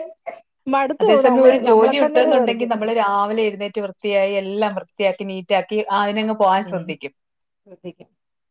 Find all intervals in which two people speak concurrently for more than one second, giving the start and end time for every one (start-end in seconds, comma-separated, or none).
1.0-2.7